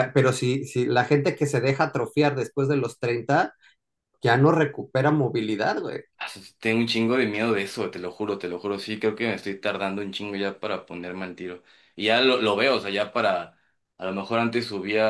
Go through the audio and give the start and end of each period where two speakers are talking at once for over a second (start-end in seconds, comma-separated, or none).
none